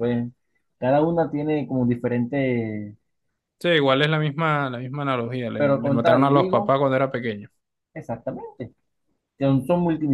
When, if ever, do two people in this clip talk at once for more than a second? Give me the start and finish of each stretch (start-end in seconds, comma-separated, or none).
5.5-6.8